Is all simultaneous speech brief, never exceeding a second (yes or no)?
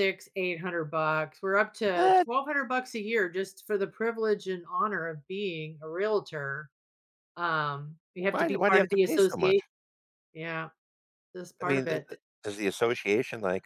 no